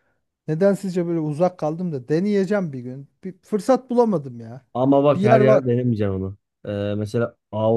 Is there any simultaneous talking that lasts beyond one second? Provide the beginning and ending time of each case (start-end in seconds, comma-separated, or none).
none